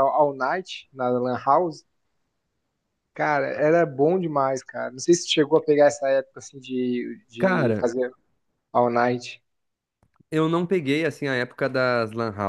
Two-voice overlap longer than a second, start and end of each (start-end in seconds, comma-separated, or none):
none